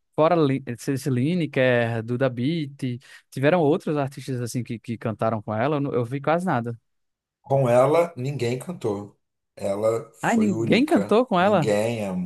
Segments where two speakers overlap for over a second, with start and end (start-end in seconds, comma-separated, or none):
10.2-11.7